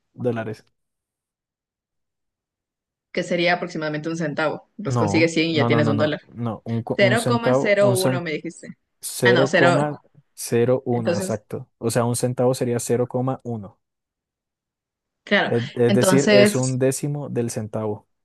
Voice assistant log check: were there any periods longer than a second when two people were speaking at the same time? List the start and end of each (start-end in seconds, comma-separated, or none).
4.8-6.2, 7.0-8.2, 15.5-16.8